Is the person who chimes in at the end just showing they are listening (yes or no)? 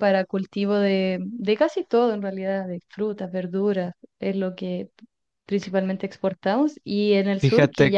yes